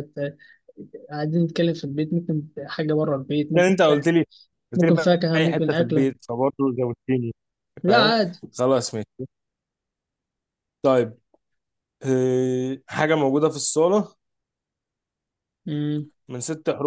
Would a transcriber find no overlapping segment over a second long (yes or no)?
no